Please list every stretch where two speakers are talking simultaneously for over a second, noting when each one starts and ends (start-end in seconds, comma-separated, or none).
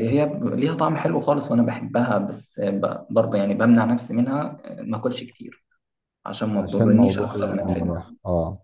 6.6-7.9